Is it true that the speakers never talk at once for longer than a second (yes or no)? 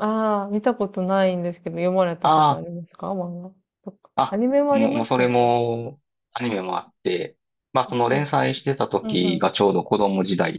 no